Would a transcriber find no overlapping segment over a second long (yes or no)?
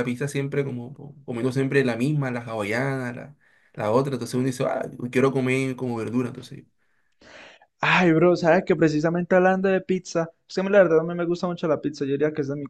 yes